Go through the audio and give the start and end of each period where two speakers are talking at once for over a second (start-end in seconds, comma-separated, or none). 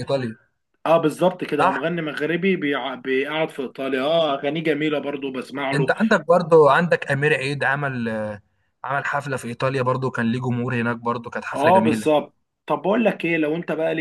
none